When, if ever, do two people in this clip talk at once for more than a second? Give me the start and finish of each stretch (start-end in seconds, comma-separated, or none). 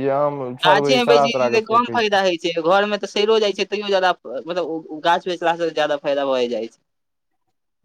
0.7-2.2